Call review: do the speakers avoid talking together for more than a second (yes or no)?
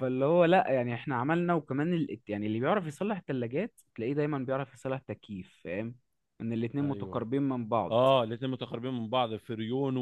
yes